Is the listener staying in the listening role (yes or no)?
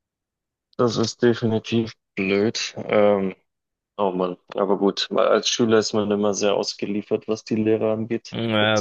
no